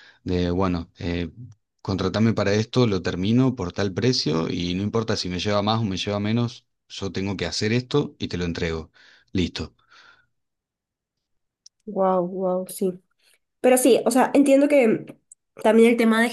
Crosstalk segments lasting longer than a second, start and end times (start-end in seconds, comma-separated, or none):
none